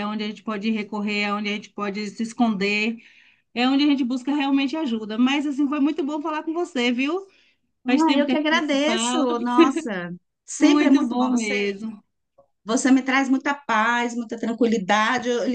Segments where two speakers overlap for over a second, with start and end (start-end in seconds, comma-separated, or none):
7.8-9.3, 10.6-11.8